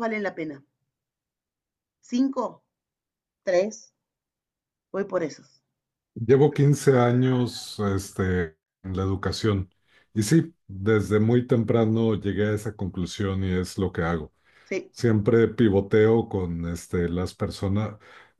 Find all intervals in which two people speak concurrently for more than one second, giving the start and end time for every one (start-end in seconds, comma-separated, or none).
none